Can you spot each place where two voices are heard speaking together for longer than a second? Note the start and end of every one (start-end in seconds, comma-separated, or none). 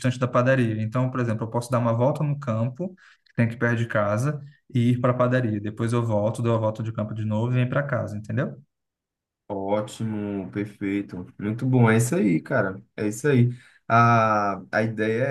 none